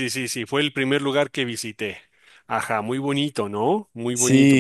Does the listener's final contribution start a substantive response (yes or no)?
yes